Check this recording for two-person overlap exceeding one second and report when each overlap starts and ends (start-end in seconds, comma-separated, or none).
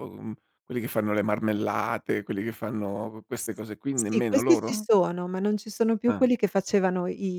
3.4-4.8